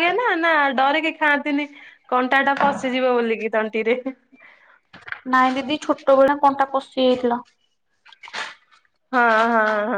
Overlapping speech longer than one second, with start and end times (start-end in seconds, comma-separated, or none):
none